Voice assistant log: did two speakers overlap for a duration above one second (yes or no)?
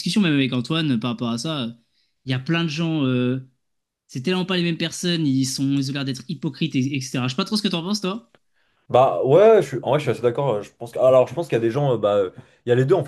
no